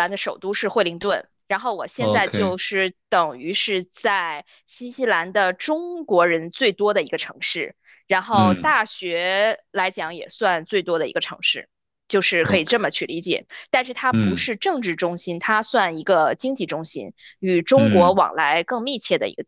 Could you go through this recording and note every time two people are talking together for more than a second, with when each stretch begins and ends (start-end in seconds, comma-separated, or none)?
none